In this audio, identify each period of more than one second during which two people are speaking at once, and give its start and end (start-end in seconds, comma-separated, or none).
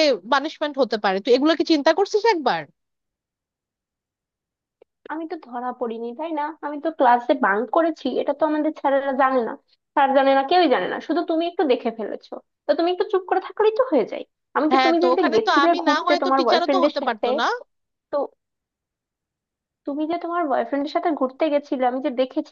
14.7-17.3